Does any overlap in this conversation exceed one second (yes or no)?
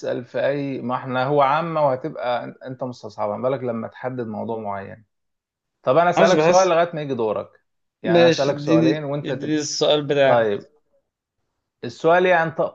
yes